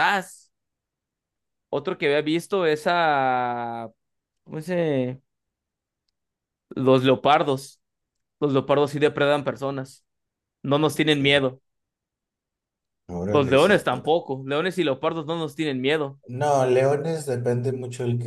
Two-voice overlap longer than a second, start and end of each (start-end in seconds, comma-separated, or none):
none